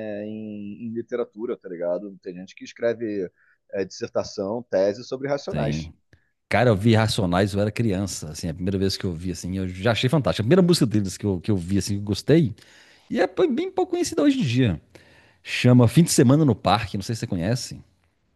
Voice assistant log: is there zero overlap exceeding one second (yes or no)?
yes